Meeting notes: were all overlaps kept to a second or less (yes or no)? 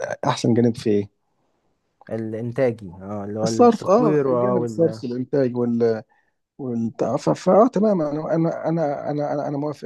no